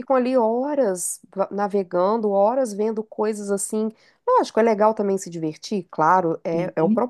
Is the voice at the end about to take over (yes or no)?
no